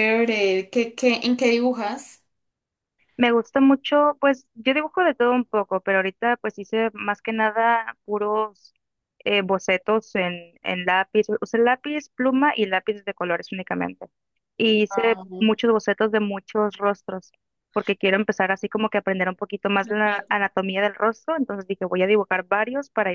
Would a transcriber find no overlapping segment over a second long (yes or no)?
yes